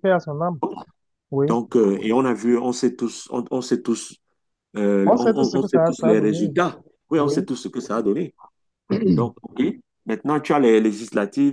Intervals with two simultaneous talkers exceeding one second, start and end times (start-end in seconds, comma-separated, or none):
5.0-6.5